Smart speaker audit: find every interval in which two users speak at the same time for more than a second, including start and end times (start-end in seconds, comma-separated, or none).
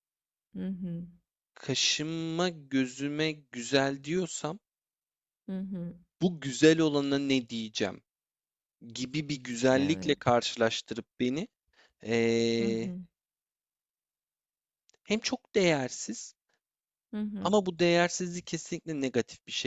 none